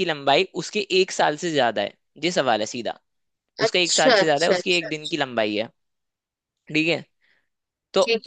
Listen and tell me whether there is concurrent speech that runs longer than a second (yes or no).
yes